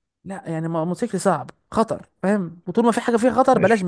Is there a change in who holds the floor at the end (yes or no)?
yes